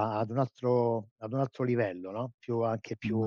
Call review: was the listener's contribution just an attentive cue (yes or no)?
yes